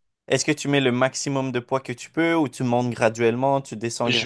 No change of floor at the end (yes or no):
no